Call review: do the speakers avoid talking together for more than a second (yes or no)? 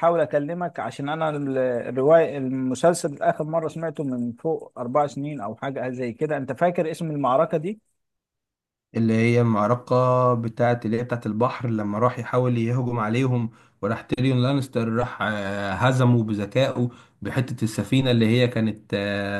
yes